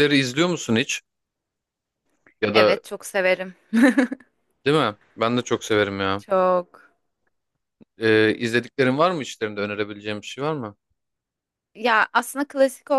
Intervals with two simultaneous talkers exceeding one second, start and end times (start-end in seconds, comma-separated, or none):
none